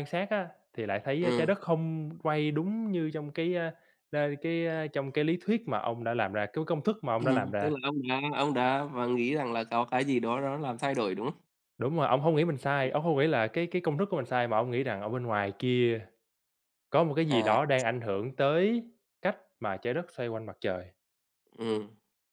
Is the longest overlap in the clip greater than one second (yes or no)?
no